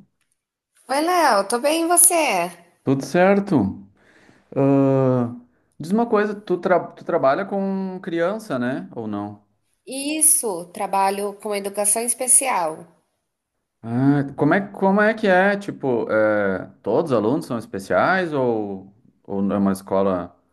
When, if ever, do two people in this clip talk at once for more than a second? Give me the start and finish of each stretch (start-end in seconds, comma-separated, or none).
none